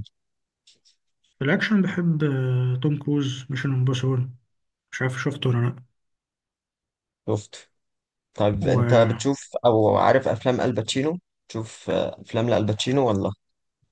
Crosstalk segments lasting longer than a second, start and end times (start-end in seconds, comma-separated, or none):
none